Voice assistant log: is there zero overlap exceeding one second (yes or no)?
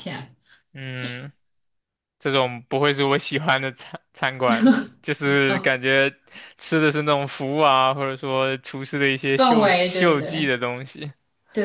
no